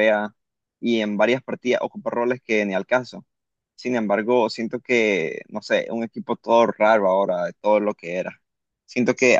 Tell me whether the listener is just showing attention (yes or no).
yes